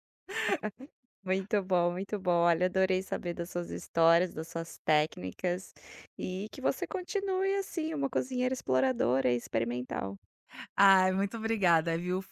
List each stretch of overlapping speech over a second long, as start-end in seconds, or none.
none